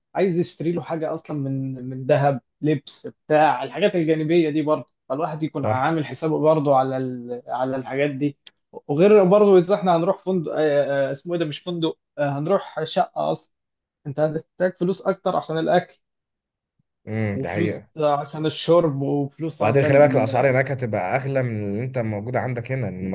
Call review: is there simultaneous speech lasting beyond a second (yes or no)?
no